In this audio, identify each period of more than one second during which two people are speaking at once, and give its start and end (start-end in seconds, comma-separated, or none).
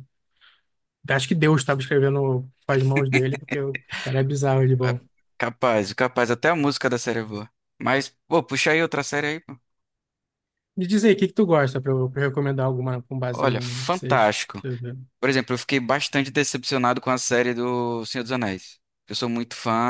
13.3-14.6